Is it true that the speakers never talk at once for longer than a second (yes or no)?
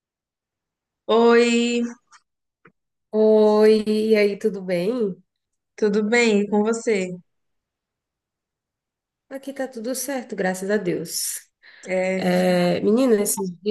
yes